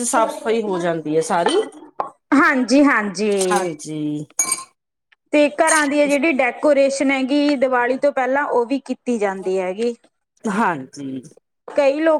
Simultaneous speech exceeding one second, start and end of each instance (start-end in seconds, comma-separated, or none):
none